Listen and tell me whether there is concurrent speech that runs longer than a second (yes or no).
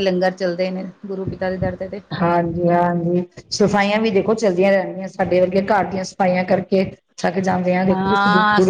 no